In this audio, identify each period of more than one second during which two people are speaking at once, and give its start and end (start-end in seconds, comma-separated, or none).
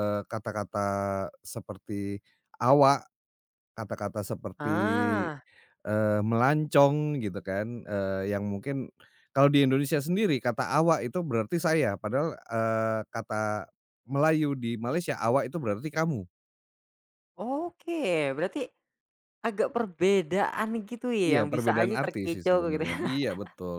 21.2-23.2